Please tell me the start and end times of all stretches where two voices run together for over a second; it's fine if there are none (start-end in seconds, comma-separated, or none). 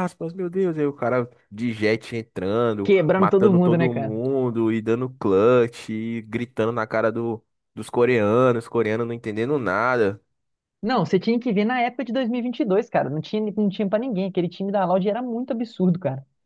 2.8-4.2